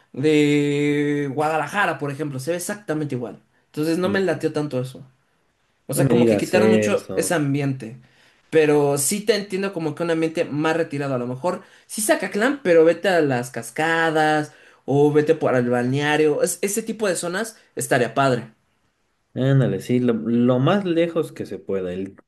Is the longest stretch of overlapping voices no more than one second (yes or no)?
no